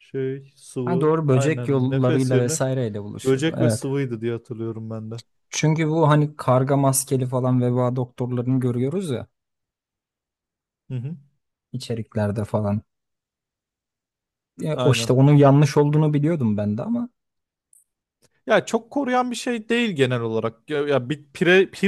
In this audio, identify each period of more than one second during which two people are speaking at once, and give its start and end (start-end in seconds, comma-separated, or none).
0.8-2.6